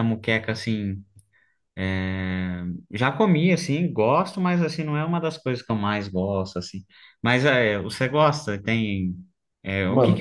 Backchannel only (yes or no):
no